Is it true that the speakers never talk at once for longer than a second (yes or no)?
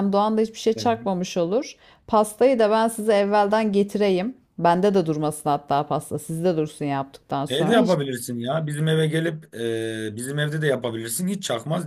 yes